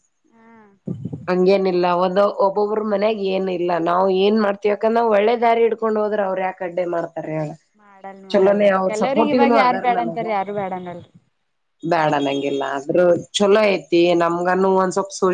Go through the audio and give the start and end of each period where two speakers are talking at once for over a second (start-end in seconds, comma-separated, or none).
8.3-9.8